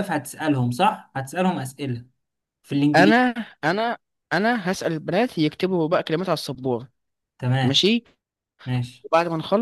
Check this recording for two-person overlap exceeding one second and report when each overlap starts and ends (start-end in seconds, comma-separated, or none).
none